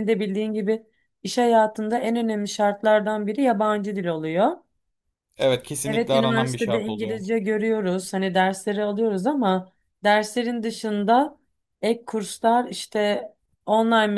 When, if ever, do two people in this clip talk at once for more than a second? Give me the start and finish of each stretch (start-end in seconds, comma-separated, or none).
5.8-7.2